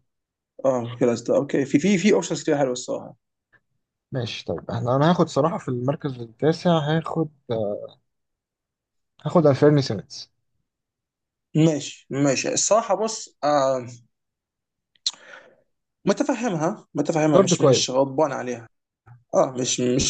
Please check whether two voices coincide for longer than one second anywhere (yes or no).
no